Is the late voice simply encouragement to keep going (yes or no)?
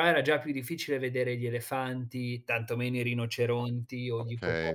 no